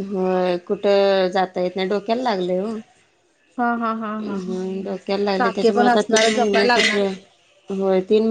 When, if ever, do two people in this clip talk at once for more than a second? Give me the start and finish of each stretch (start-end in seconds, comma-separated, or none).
5.4-7.0